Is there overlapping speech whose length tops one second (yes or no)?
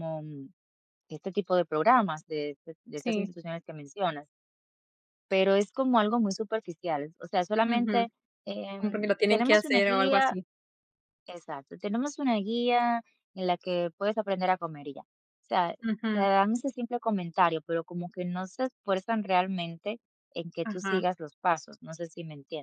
yes